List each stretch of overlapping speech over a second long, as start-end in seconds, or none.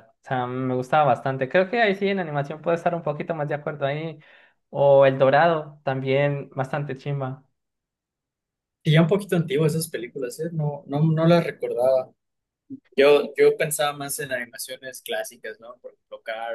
none